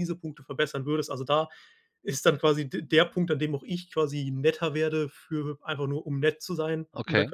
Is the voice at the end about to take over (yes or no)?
no